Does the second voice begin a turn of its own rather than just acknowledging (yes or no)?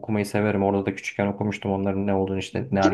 yes